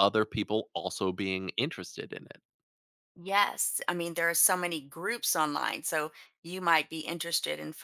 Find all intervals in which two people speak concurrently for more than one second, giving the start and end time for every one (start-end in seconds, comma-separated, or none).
none